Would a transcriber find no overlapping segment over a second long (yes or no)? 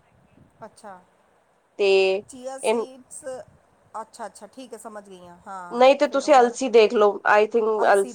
yes